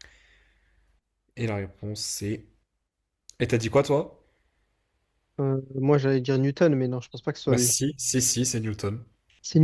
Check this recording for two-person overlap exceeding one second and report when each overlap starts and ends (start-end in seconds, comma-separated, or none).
none